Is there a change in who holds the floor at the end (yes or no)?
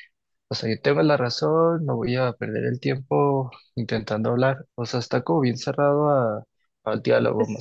yes